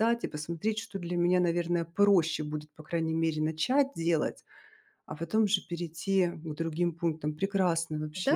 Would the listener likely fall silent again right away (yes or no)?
no